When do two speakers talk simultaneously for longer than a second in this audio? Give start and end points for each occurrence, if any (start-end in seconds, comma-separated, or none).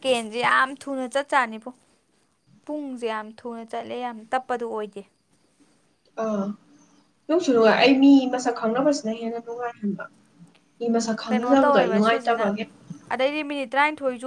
11.2-12.5